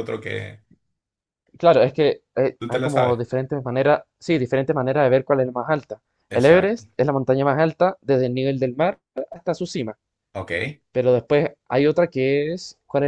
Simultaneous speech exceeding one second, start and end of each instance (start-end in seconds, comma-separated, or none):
none